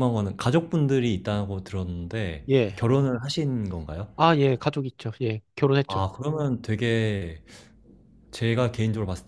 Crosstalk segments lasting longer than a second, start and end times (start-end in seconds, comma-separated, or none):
none